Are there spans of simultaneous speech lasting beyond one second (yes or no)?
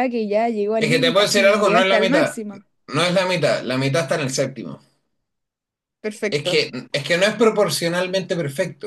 yes